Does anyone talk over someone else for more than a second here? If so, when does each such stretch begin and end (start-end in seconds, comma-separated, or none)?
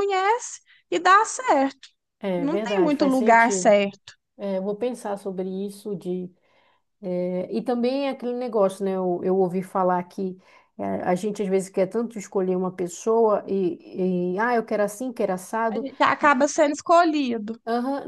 2.4-3.8